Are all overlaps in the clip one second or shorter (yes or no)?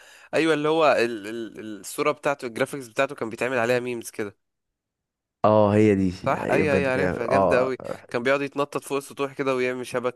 no